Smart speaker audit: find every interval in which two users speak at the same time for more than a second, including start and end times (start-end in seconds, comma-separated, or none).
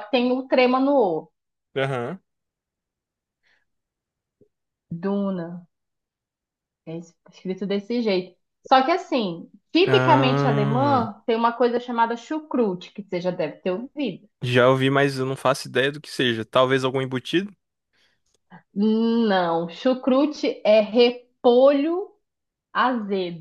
9.8-11.1